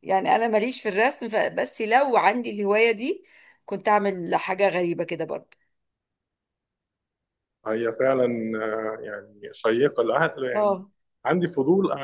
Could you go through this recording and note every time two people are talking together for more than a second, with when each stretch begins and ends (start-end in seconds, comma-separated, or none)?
none